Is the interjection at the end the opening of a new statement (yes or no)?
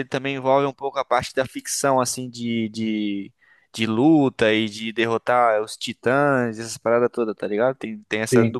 no